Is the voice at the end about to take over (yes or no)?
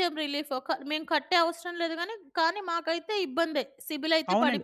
yes